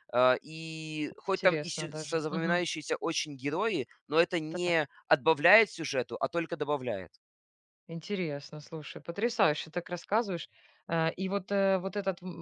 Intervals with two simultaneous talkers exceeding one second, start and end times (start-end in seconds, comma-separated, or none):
1.3-2.6